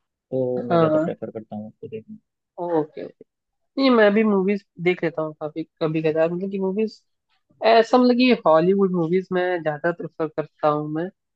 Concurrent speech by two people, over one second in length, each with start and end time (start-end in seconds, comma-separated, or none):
none